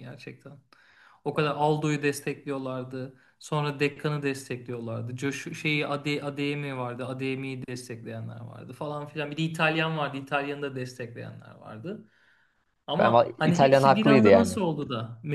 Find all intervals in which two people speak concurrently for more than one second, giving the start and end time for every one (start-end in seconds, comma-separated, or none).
13.0-14.6